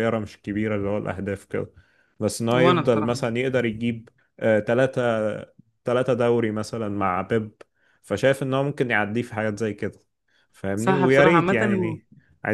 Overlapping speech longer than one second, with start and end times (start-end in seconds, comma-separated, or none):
10.7-12.0